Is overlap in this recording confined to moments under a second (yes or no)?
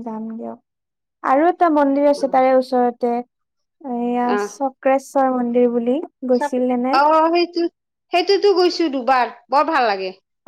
yes